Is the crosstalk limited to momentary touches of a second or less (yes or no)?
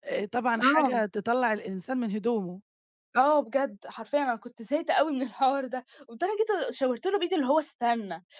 yes